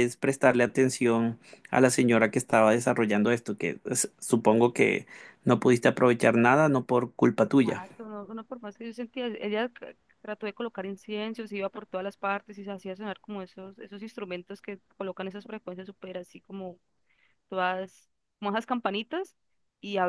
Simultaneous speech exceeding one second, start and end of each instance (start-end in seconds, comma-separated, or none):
none